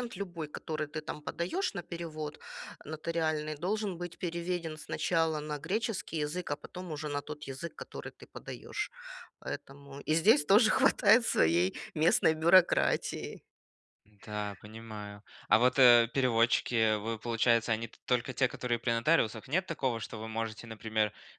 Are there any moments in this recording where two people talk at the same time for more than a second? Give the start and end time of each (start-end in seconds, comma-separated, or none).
none